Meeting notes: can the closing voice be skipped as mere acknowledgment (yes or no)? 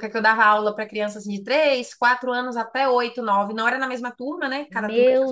no